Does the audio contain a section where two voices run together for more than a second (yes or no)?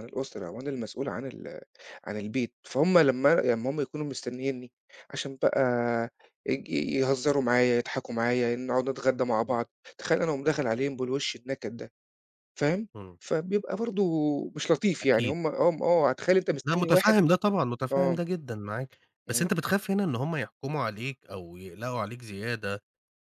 no